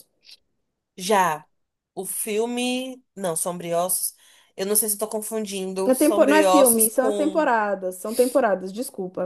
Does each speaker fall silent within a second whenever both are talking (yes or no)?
no